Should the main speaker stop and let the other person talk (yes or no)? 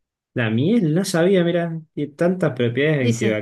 no